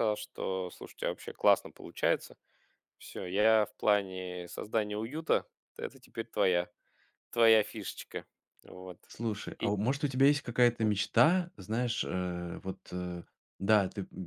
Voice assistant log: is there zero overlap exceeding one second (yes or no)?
yes